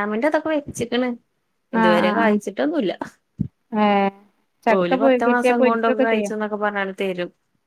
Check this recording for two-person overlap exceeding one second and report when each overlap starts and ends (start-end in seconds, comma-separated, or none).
4.8-6.3